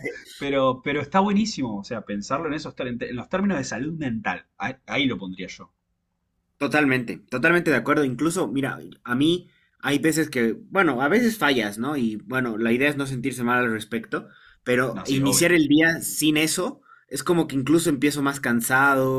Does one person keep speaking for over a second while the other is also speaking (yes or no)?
no